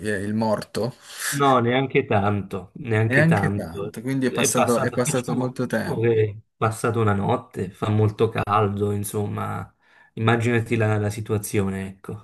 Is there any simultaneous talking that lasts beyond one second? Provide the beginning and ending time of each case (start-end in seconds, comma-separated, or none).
3.1-6.2